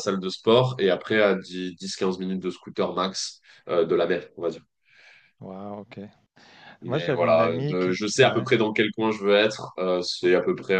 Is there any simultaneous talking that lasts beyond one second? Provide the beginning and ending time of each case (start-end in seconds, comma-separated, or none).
6.9-8.5